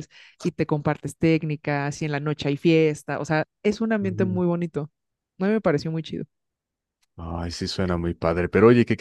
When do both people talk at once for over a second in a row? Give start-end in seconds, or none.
none